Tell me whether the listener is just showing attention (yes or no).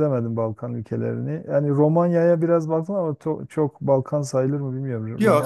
no